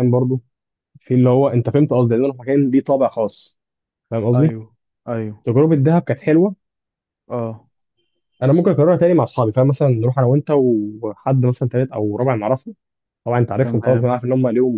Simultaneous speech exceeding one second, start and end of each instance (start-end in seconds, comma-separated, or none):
none